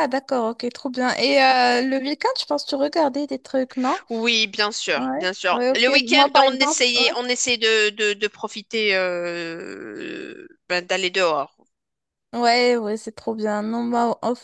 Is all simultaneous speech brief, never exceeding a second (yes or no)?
no